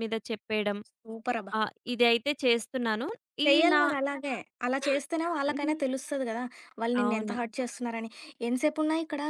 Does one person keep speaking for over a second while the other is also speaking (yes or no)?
no